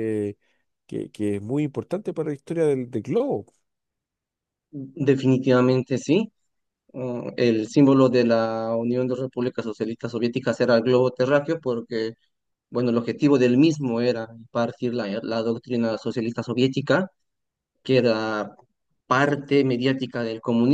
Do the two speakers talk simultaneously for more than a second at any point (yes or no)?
no